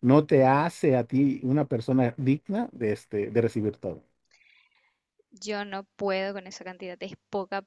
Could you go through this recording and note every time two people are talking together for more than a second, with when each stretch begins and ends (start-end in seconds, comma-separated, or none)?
none